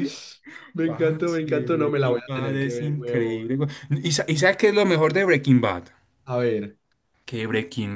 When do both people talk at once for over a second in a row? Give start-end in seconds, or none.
0.8-3.6